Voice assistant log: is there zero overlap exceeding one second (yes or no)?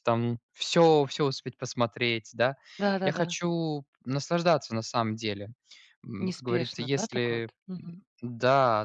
no